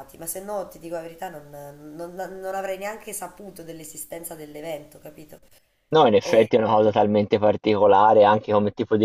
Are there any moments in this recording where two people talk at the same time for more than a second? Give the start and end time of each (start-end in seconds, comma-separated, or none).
none